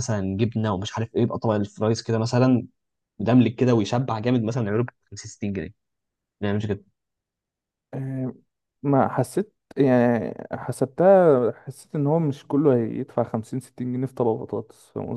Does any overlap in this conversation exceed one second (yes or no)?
no